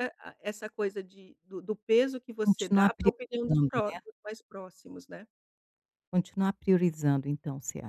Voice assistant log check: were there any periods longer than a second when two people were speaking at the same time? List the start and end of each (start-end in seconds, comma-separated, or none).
2.4-4.0